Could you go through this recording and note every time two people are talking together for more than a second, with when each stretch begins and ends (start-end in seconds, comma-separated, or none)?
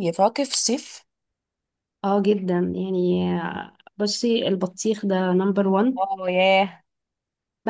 none